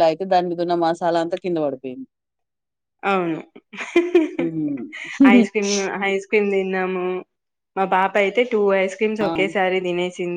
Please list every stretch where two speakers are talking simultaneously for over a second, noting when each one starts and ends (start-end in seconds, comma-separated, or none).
none